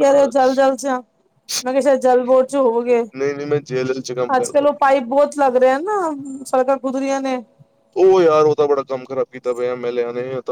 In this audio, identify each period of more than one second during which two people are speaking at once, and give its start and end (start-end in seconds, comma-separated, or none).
none